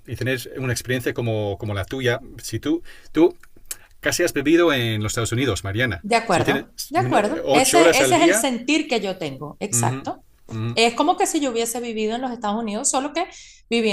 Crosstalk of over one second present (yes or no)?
yes